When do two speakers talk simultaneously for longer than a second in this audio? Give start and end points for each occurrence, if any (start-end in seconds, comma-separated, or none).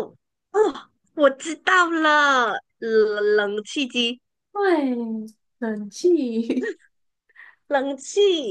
none